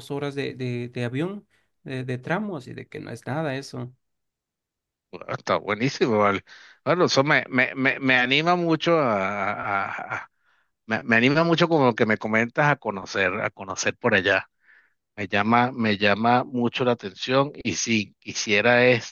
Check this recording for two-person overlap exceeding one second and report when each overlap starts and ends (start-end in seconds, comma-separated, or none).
none